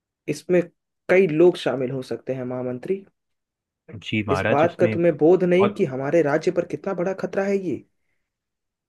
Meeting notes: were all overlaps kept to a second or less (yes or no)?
no